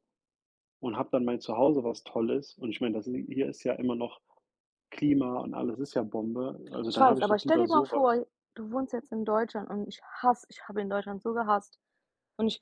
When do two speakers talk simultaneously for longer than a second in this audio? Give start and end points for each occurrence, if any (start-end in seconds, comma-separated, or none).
6.9-8.2